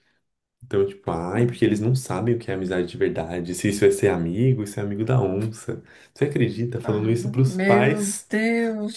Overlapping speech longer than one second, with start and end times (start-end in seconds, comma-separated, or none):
6.8-8.3